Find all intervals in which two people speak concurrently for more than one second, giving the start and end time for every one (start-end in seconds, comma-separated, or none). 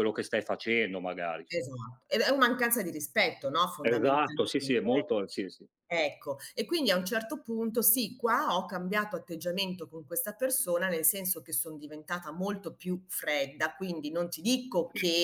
3.8-5.1